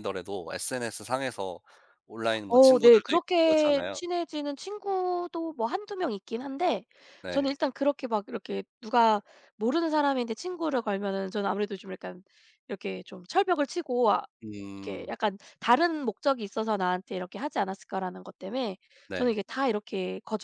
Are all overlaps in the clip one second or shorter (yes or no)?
no